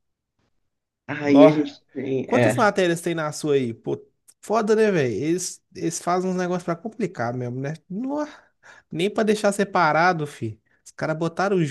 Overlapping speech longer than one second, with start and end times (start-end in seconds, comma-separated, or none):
none